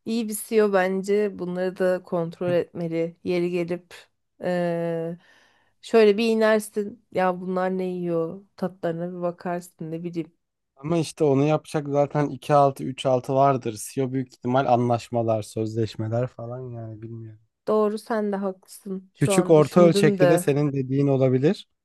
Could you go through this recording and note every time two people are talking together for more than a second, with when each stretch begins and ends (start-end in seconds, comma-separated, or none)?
19.2-20.5